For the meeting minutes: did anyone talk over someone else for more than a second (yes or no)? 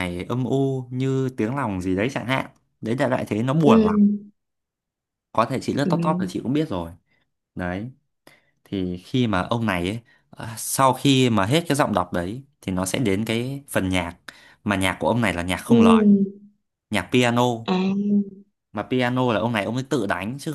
no